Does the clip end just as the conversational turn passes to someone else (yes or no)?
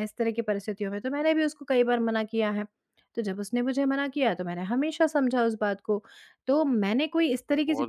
no